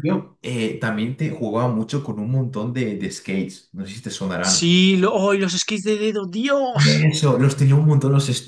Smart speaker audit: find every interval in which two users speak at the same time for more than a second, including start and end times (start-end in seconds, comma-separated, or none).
none